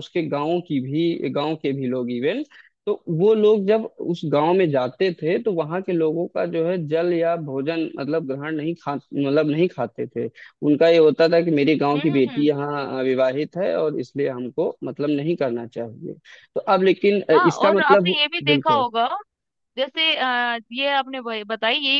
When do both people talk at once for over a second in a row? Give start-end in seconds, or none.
17.3-18.9